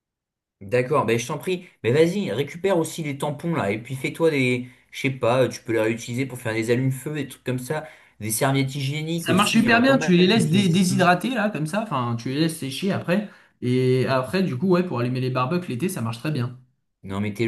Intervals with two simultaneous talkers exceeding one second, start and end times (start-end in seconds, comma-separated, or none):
9.2-11.1